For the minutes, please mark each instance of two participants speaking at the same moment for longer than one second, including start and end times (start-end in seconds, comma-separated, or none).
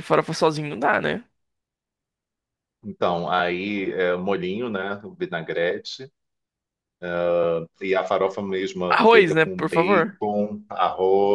8.9-10.2